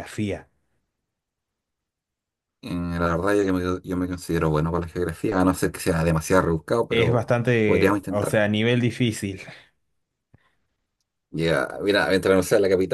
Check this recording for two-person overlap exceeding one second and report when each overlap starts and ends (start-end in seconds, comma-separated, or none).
6.9-8.4